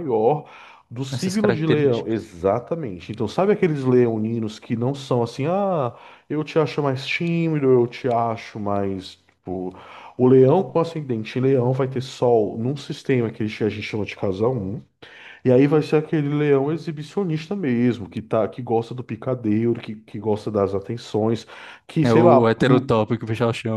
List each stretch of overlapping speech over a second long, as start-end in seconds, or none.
1.1-2.3